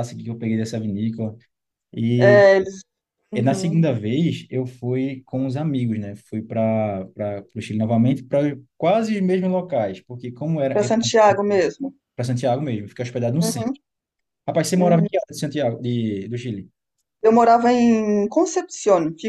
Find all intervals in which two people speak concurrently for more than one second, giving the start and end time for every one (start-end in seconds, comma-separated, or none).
none